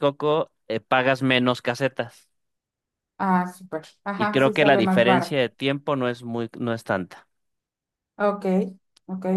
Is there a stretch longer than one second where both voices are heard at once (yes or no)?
yes